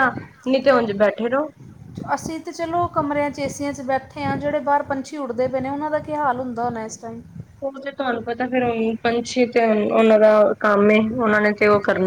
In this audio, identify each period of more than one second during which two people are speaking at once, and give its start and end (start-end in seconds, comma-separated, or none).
none